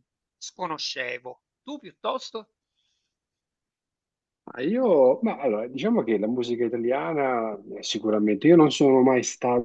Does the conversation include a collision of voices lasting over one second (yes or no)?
no